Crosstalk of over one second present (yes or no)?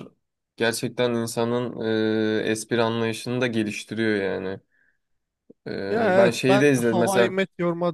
yes